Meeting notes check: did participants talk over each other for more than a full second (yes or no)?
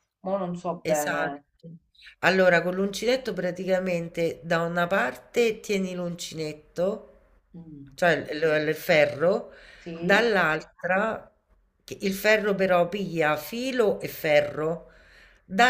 no